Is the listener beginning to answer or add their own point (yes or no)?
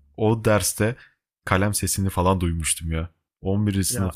no